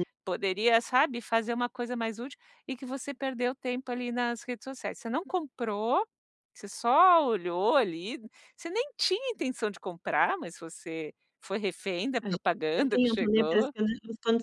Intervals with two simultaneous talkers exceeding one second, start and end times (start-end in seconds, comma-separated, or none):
12.2-13.7